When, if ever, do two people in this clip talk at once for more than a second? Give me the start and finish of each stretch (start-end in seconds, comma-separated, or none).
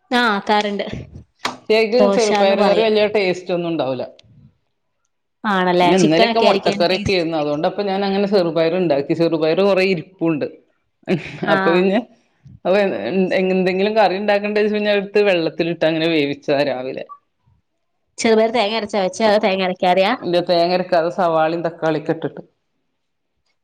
5.8-7.3